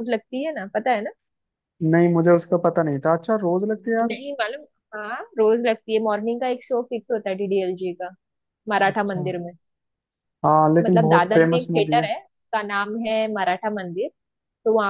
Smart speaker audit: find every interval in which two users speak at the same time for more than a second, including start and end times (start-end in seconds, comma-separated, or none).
10.8-12.1